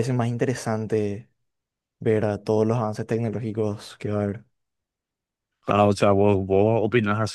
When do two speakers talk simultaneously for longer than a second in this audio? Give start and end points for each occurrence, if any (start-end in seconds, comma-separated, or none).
none